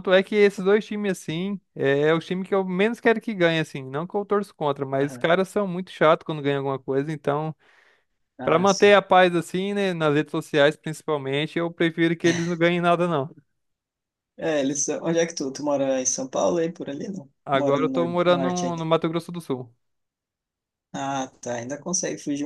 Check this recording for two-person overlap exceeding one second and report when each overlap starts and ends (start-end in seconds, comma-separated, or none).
17.4-18.8